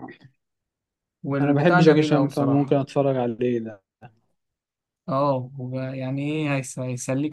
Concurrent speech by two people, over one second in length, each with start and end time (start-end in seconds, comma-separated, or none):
1.4-2.8